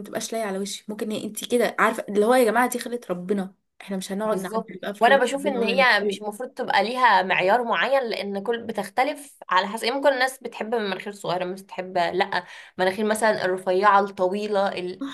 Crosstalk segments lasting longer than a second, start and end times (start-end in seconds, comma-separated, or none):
4.2-5.9